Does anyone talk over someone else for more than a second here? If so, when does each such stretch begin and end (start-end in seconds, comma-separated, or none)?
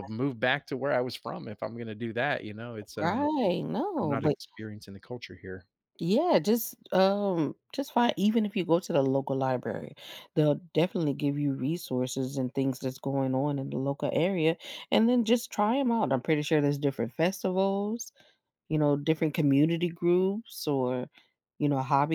none